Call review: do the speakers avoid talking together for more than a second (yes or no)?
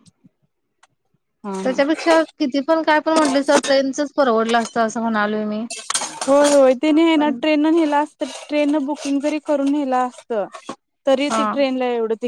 yes